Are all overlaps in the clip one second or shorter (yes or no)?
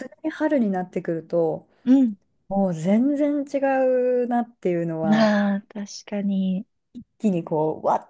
yes